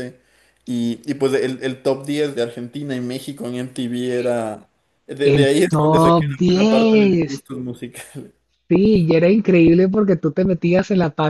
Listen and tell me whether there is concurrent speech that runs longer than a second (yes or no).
yes